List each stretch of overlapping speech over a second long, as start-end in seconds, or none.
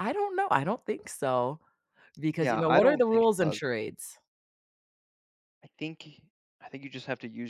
2.4-3.6